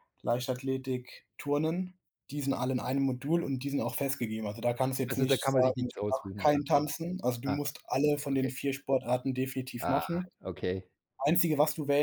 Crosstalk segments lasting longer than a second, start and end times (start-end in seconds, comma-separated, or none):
5.1-6.6